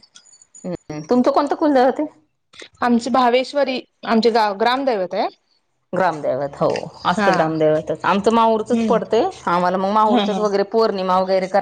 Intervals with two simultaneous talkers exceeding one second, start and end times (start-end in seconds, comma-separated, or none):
none